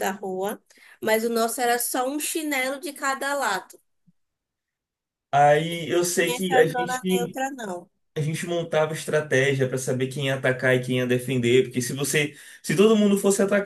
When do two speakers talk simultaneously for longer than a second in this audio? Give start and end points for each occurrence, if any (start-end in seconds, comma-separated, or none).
6.2-7.4